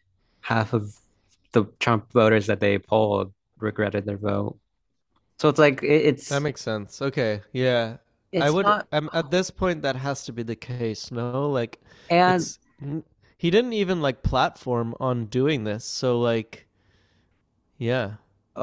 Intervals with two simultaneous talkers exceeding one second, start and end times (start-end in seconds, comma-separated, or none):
none